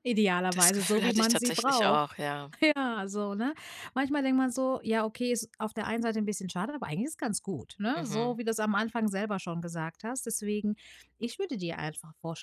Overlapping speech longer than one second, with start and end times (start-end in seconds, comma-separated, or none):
0.5-2.0